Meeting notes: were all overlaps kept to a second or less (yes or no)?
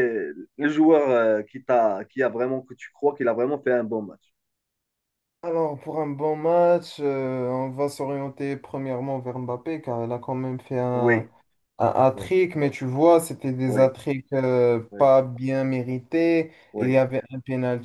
yes